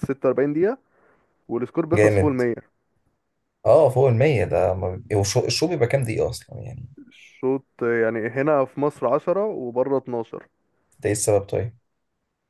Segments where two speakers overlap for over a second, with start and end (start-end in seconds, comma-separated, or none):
none